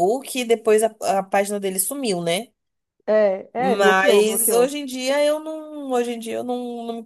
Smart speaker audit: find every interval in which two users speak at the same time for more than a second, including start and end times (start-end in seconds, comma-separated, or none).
3.6-4.8